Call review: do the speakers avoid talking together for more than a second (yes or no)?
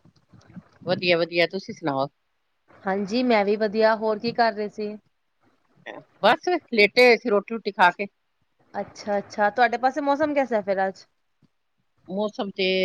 yes